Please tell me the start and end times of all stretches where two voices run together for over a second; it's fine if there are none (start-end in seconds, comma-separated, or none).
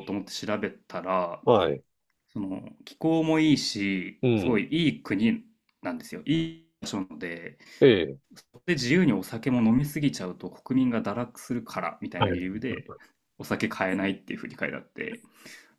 none